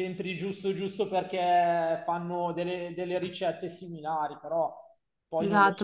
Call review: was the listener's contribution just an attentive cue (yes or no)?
no